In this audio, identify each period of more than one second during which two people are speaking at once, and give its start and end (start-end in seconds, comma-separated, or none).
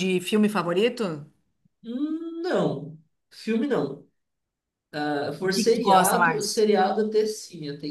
5.4-6.6